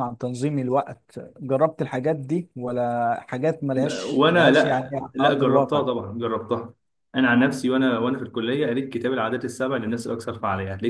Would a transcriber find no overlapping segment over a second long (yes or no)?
no